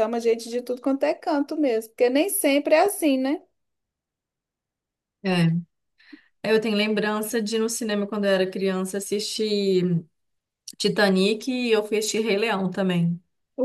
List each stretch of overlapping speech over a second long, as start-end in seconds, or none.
none